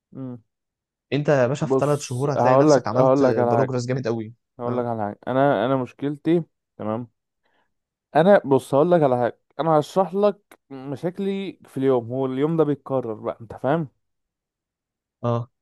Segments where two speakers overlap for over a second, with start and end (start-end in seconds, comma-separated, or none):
1.6-3.8